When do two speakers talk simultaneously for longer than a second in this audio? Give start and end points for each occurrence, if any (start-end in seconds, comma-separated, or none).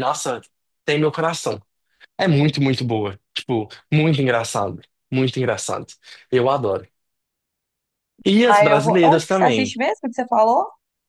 8.4-9.8